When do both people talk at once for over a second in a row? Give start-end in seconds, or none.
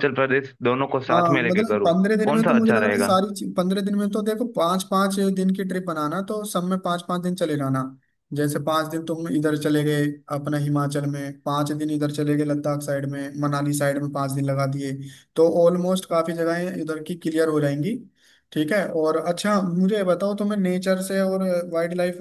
1.1-3.2